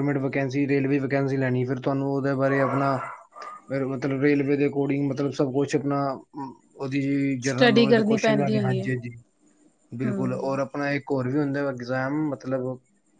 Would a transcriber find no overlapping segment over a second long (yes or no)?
no